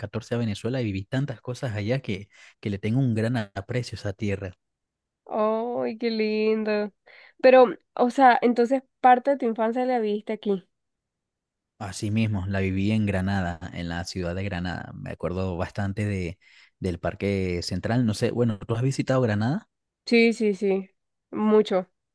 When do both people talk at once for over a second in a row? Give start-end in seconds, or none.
none